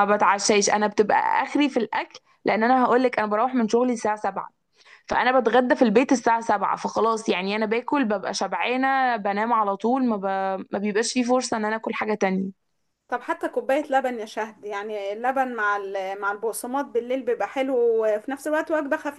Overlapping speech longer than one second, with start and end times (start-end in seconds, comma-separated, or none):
none